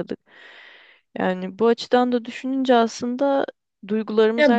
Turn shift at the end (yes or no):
no